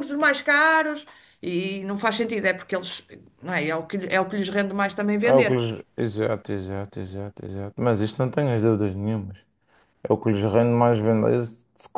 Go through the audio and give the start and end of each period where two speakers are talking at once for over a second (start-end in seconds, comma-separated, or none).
none